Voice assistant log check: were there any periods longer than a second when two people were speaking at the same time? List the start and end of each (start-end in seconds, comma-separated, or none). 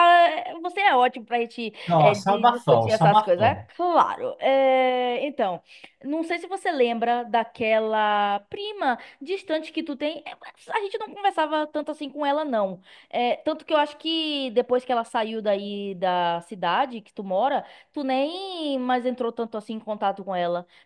1.9-3.6